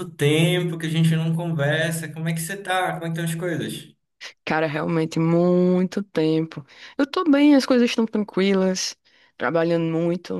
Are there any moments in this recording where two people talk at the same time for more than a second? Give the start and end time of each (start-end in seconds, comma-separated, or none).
none